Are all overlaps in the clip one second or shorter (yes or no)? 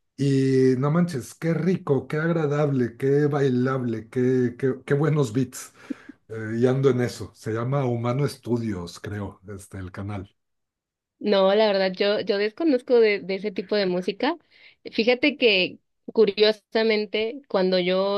yes